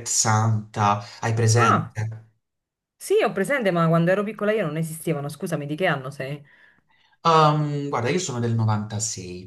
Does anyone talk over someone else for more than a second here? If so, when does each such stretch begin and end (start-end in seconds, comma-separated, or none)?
none